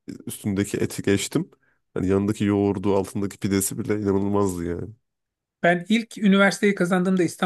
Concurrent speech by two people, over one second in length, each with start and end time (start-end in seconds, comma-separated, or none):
none